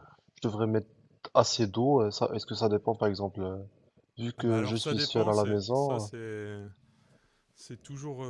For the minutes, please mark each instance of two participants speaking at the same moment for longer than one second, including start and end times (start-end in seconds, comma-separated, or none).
4.4-6.1